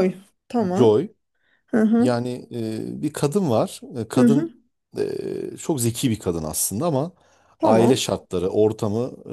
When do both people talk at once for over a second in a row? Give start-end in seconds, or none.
none